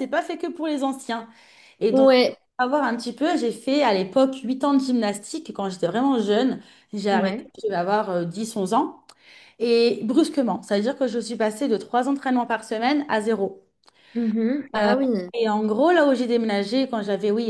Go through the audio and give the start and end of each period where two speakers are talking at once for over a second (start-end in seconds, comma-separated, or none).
none